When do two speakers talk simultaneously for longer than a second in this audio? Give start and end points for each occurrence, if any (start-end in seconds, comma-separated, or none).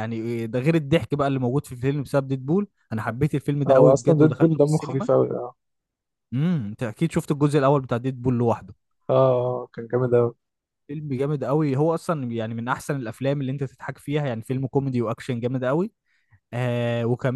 3.7-5.1